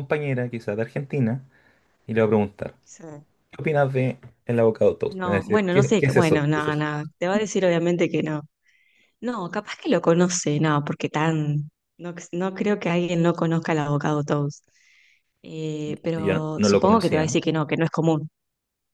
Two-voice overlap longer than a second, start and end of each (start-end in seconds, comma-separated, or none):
5.1-6.9, 16.1-17.4